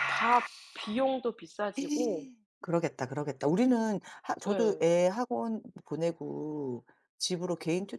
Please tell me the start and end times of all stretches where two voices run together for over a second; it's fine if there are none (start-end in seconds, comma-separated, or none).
none